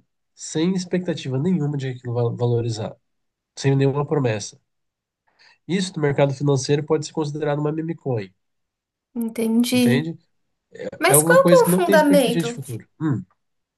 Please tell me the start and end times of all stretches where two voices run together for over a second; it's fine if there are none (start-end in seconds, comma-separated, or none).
11.1-12.5